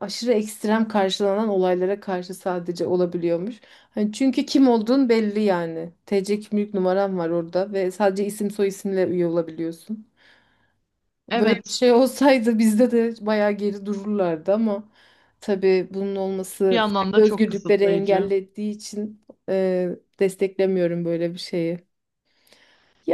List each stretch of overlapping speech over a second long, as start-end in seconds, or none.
16.7-18.3